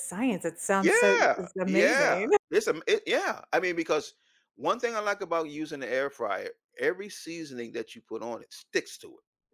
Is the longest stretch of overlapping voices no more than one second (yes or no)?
no